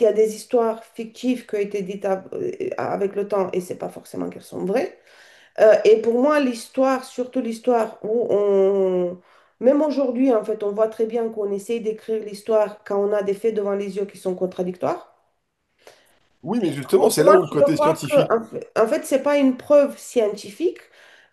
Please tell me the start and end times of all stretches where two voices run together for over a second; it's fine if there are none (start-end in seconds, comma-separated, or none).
16.9-18.4